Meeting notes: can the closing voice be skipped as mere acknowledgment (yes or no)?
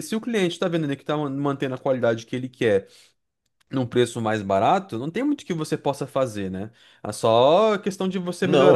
yes